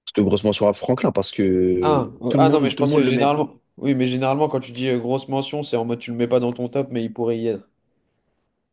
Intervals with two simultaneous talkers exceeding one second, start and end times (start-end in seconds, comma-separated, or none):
1.8-3.3